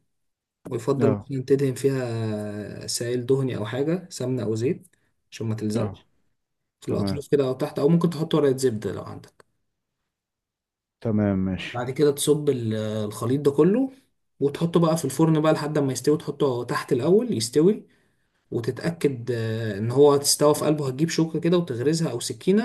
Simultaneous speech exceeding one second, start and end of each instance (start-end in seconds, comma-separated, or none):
none